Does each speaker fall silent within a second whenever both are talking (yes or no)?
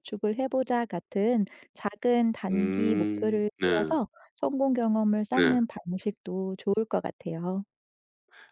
no